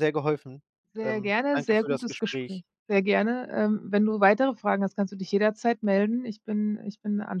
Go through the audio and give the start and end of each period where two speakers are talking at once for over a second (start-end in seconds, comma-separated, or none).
1.0-2.6